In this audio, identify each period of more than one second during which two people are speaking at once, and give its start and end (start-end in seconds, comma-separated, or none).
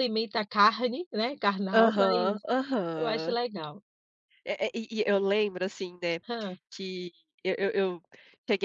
none